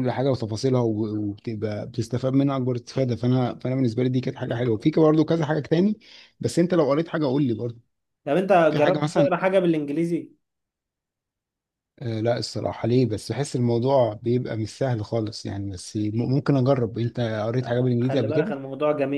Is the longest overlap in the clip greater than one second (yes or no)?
no